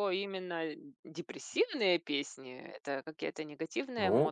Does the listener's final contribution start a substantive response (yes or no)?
yes